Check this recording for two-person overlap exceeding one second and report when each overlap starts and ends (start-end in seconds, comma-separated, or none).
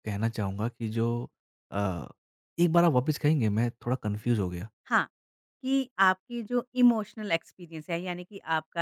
none